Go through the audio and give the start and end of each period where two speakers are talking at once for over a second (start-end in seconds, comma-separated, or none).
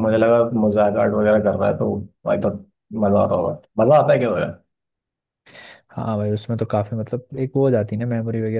none